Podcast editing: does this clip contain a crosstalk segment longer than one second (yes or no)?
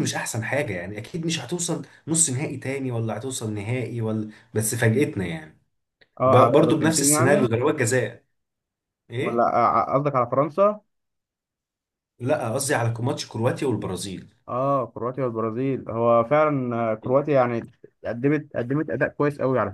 yes